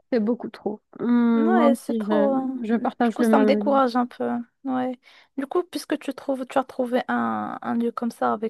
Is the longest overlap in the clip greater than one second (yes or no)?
yes